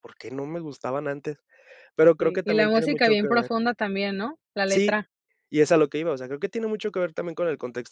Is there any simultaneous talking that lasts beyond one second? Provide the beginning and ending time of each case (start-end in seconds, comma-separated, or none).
2.2-3.5